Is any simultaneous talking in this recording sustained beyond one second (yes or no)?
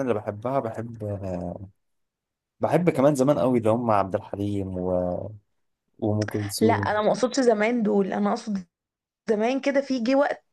no